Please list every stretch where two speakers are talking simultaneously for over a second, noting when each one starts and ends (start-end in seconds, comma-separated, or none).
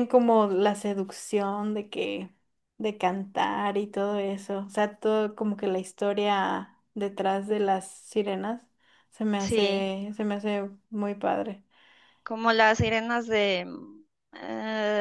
none